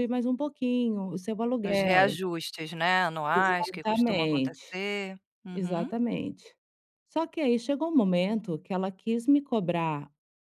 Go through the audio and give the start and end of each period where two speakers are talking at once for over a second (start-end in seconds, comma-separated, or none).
3.3-4.8